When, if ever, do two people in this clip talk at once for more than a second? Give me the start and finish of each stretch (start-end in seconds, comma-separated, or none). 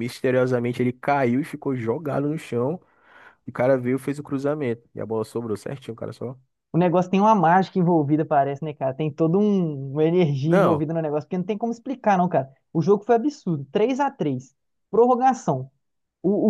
none